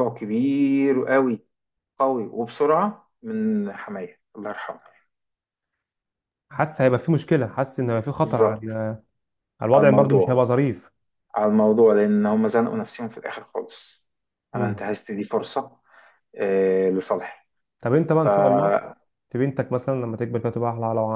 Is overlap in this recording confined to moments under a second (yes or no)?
yes